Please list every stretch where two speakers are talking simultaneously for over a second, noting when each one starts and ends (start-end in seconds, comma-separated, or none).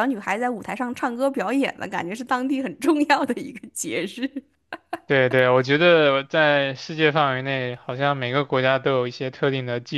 none